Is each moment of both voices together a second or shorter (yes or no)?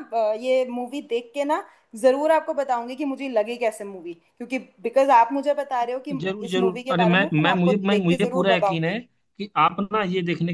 no